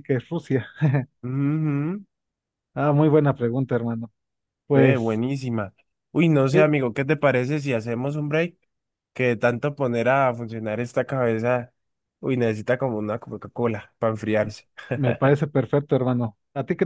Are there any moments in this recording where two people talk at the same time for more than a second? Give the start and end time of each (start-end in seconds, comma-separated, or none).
none